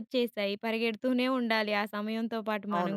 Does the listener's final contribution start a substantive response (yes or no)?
yes